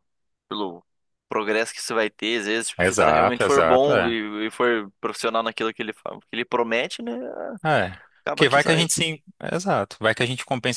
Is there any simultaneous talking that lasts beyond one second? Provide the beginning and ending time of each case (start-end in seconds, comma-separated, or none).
2.8-4.1